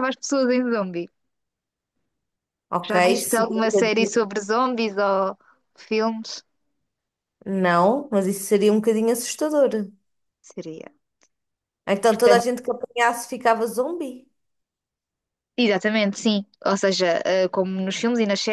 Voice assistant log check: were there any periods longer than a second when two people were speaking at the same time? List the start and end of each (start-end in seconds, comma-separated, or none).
2.8-4.2